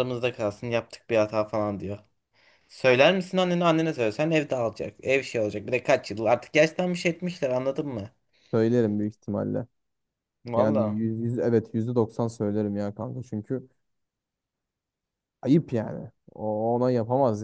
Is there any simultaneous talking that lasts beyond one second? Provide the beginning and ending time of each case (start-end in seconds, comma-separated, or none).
none